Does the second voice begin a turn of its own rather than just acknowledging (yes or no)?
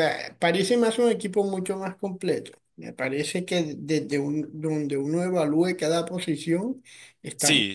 yes